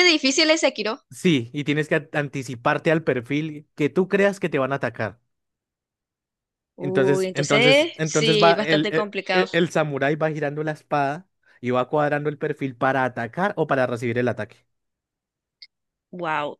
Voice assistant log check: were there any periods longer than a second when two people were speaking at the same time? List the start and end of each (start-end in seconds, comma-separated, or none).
6.8-9.5